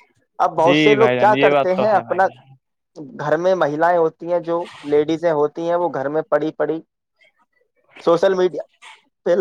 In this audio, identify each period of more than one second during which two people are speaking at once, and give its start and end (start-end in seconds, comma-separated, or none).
0.6-2.3